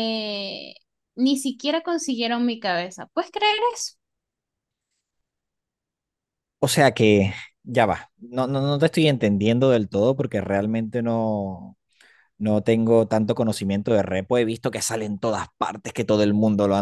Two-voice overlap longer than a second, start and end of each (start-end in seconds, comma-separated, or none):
none